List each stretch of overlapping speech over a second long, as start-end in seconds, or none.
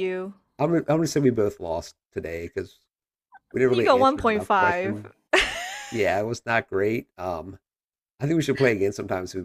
3.7-5.0